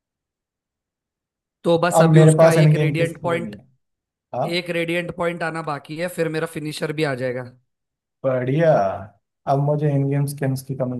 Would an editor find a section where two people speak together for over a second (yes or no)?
yes